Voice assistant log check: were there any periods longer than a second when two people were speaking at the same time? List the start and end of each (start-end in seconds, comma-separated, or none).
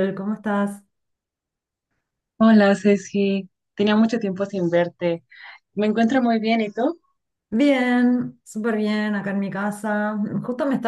none